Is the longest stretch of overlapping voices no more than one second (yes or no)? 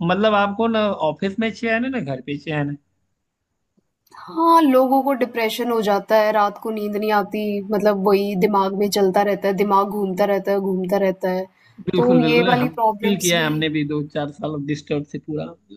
no